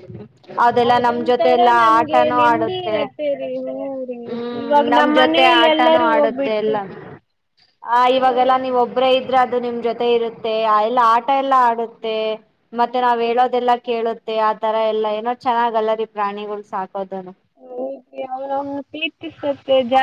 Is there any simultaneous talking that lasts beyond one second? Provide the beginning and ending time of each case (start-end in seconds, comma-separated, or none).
4.9-6.8